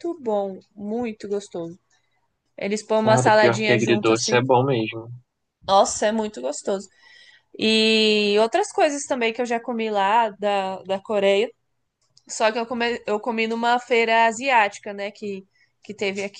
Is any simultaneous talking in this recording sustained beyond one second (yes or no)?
yes